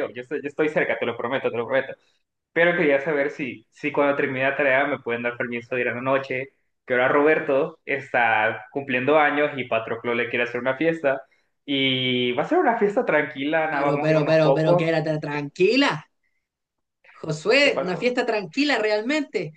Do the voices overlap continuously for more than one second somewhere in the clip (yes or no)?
yes